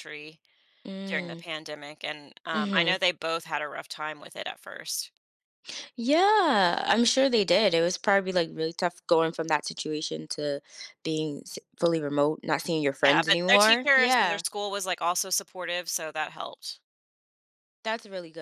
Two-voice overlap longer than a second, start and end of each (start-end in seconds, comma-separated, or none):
13.0-14.4